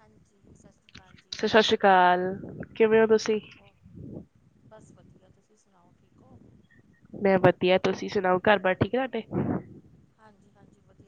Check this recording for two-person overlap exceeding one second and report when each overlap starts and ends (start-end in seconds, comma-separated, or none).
none